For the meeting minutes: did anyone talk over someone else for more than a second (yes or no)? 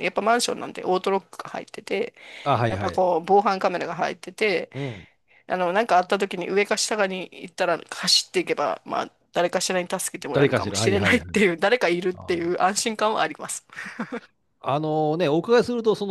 yes